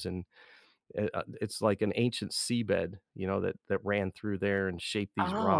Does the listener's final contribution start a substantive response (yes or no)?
no